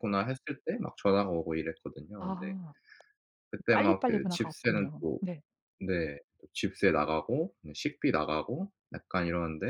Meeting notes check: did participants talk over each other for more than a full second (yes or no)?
yes